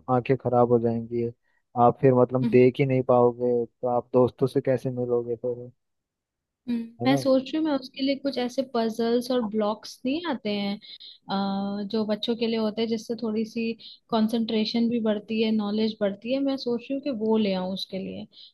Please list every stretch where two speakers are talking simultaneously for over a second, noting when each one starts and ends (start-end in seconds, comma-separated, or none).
none